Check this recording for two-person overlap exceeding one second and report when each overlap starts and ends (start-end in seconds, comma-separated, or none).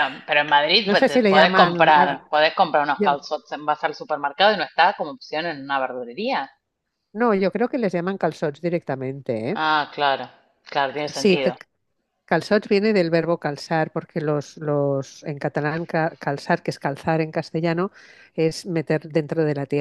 0.8-2.2